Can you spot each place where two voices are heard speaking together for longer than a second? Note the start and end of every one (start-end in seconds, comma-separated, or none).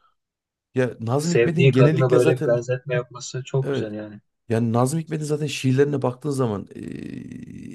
1.2-2.6